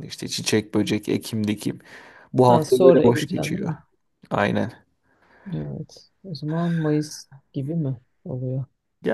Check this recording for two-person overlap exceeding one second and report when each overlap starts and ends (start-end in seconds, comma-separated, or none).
2.5-3.7